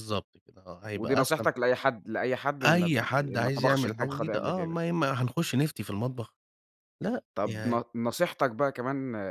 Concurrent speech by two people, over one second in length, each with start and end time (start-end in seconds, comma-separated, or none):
2.6-4.8